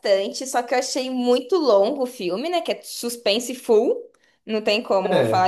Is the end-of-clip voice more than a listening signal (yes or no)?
no